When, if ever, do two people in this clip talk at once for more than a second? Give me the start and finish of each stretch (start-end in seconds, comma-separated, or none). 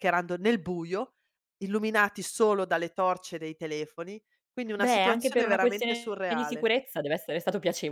4.8-6.7